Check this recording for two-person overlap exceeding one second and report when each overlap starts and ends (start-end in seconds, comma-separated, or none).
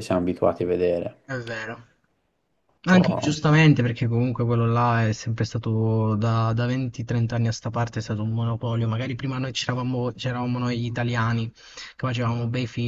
none